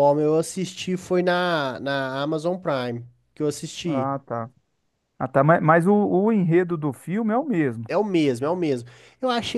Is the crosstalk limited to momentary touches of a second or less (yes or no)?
yes